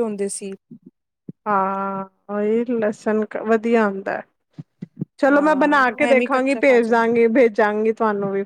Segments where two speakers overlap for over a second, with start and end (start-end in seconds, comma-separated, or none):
5.3-7.1